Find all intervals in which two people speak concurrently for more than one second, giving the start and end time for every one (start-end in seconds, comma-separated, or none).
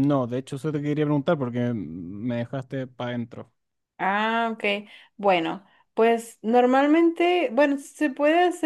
none